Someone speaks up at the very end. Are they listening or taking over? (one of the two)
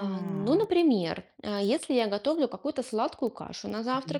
listening